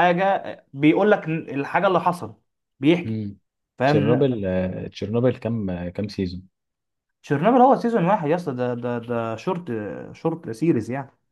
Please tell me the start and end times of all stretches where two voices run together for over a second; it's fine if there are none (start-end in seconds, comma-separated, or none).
none